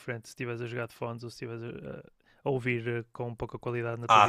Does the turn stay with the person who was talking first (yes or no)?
no